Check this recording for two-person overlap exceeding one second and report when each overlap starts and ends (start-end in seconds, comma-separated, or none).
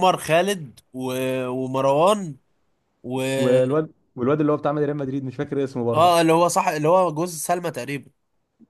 none